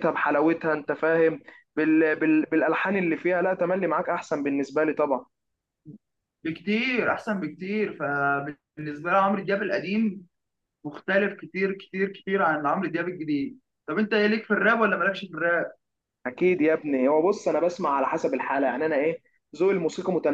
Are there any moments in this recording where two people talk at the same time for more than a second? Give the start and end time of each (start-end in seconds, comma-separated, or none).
none